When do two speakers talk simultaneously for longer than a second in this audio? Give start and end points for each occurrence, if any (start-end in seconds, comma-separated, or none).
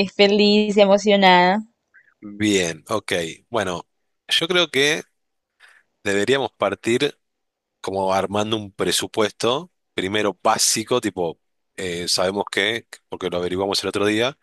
none